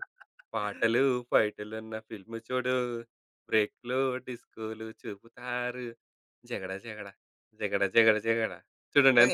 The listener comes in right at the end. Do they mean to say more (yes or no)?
yes